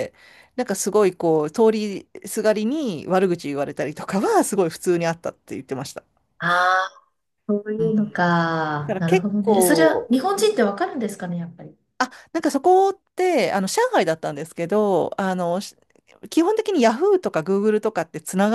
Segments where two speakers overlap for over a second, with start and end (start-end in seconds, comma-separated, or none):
8.9-10.1